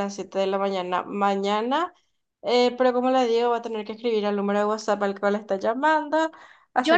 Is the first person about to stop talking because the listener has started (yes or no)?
yes